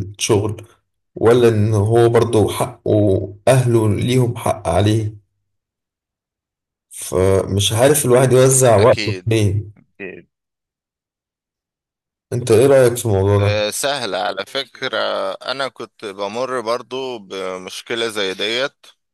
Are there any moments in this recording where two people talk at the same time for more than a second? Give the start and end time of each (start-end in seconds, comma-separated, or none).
none